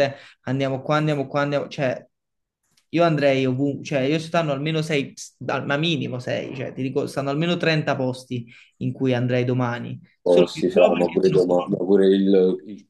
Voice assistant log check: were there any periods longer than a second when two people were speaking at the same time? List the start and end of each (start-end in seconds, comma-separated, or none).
10.3-11.7